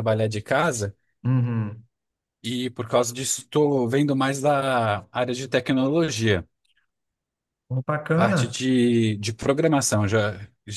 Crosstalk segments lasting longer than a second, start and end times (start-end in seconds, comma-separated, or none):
none